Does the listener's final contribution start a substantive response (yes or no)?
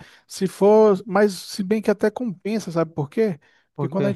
no